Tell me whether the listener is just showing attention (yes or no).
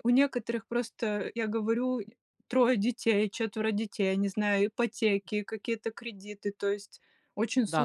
no